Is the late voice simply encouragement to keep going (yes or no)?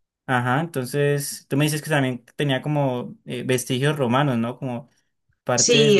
no